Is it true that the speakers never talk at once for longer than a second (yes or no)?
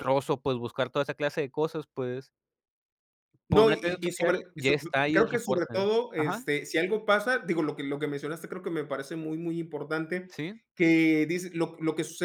no